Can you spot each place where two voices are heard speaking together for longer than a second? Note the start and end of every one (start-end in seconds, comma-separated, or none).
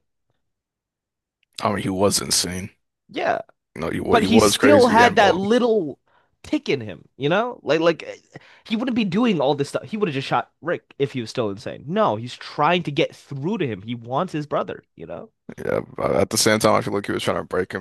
4.1-5.4